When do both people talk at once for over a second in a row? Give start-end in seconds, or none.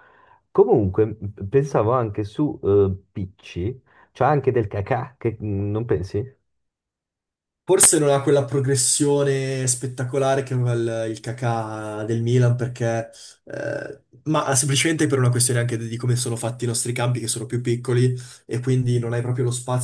none